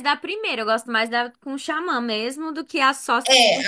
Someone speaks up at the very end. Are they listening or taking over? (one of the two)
taking over